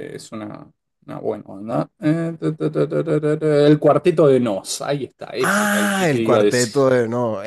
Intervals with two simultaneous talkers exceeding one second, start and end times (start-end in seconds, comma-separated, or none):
5.4-6.9